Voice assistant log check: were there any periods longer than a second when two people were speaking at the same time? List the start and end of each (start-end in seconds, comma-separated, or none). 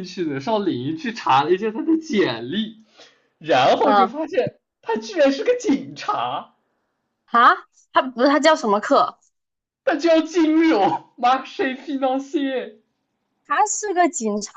none